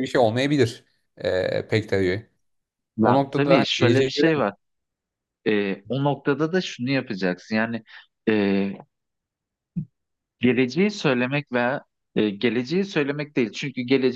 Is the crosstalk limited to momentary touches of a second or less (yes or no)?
no